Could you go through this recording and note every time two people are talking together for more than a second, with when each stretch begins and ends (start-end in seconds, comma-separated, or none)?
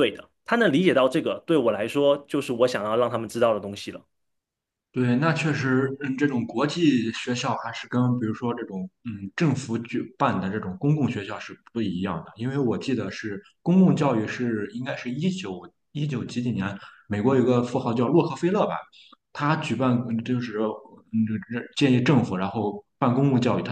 none